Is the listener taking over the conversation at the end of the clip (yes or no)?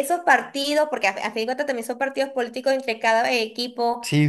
no